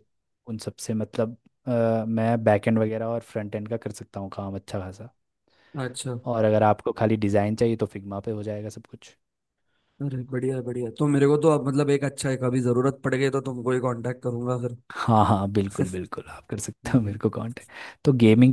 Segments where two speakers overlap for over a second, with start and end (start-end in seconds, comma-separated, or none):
none